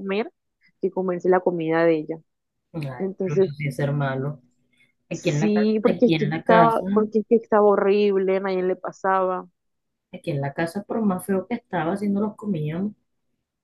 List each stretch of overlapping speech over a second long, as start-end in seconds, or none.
5.1-6.8